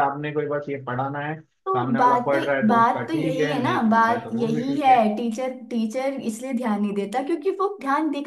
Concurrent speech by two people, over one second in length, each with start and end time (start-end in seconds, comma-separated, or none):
1.6-5.0